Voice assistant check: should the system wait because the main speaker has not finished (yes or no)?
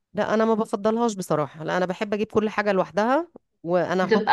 yes